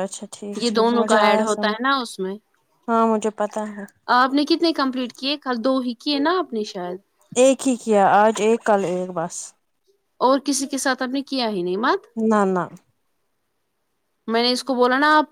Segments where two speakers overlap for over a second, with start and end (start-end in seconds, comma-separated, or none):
none